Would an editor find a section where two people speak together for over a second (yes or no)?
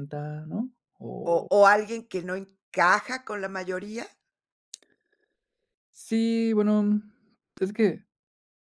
no